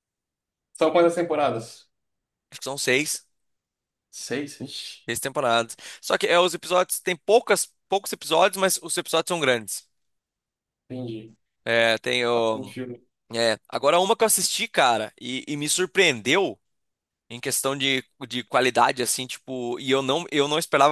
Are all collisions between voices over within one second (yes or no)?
yes